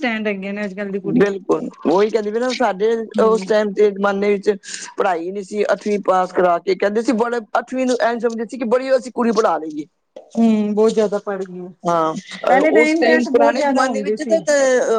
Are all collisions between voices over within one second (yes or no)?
no